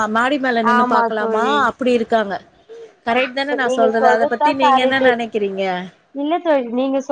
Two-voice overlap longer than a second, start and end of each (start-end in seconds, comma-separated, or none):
3.2-5.0